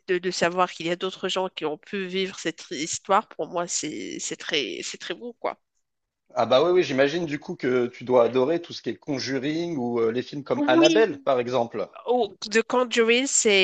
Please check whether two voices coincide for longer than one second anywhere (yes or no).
no